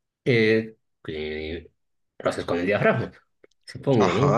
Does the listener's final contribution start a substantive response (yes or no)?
yes